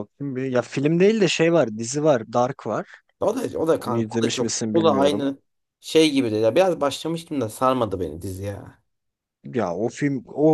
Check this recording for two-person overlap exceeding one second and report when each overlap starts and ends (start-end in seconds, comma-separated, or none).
3.8-5.3